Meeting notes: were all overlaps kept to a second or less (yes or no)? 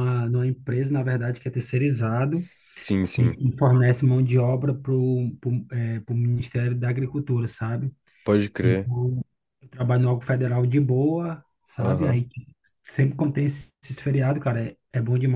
yes